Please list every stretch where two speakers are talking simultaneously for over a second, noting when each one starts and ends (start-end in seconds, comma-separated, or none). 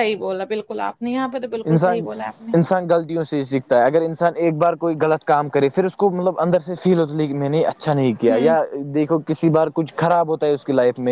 none